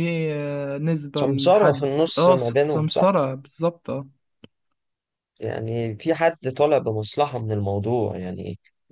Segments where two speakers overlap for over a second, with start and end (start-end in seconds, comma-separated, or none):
1.2-3.0